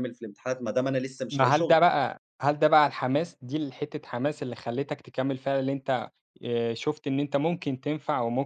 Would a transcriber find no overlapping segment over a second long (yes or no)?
yes